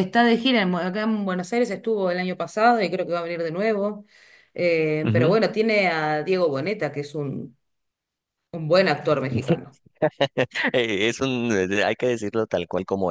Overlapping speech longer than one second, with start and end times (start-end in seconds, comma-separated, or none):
none